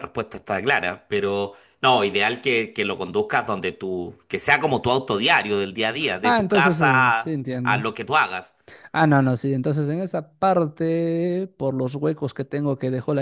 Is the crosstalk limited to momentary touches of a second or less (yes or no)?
no